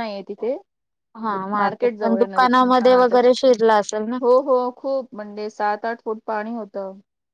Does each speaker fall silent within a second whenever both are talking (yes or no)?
no